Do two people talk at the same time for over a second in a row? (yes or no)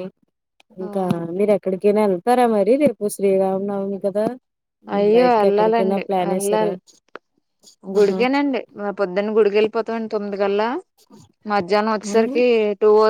yes